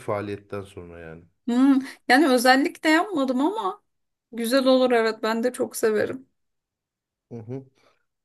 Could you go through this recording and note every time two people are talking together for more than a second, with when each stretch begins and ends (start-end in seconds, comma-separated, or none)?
none